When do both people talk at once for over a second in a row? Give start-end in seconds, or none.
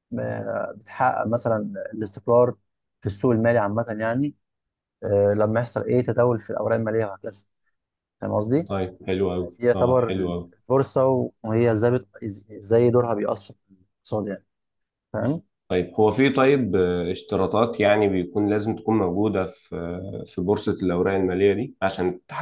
none